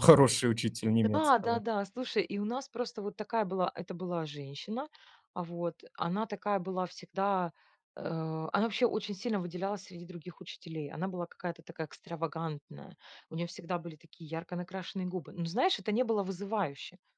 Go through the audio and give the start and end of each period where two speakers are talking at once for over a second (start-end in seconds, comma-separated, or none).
none